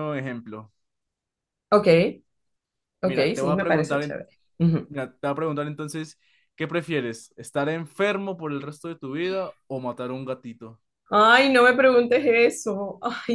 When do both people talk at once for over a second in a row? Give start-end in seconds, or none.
3.0-4.2